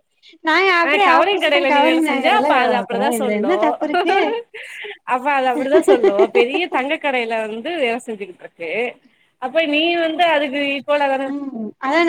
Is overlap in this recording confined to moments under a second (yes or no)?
no